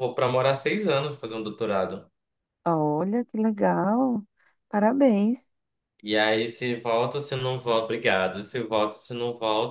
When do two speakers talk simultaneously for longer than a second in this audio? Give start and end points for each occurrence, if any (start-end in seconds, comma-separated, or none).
none